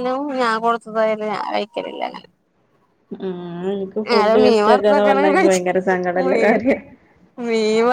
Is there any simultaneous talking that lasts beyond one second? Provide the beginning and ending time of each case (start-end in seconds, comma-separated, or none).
4.1-5.6